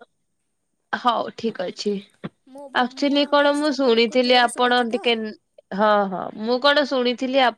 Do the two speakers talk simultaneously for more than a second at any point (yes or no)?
yes